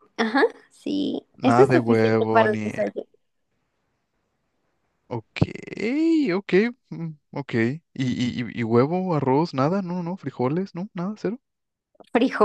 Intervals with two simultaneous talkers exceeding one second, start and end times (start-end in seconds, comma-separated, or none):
1.4-2.7